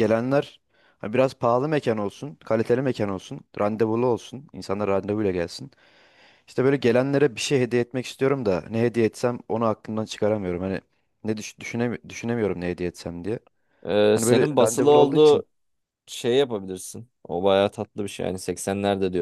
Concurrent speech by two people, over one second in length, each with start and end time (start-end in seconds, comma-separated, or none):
14.1-15.4